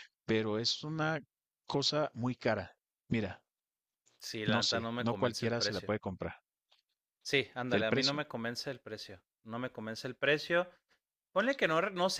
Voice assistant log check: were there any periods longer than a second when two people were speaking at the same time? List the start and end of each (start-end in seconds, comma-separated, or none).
4.4-5.9